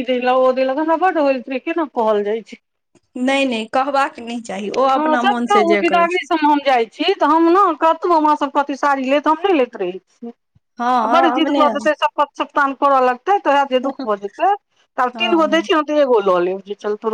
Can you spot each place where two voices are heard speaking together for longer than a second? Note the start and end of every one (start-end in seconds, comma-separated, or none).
none